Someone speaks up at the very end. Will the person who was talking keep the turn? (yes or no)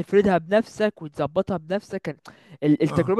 yes